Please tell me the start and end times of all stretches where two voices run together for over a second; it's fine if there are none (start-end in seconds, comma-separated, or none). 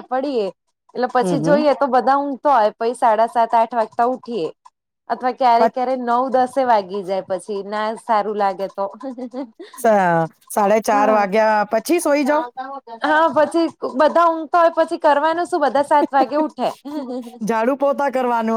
none